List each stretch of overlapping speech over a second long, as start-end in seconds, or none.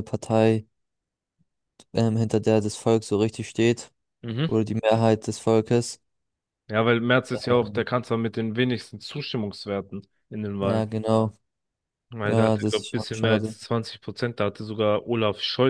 12.2-13.6